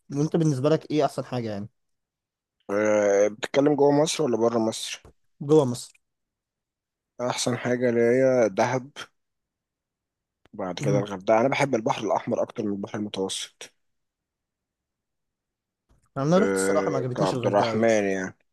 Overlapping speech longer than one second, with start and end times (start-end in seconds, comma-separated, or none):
16.4-17.9